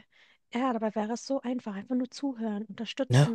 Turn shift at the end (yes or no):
no